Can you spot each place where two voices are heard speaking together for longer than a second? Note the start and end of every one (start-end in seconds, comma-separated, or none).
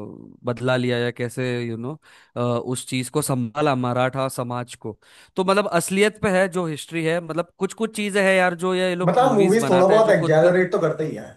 9.0-10.4